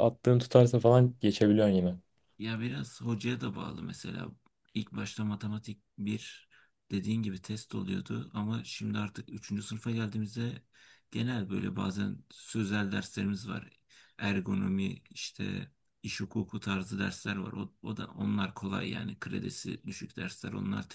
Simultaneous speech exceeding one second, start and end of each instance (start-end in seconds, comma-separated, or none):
none